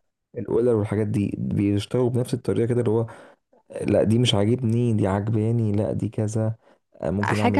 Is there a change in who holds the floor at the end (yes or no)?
yes